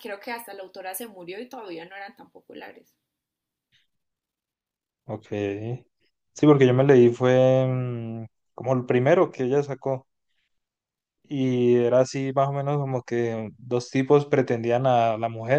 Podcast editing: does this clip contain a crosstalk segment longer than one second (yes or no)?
no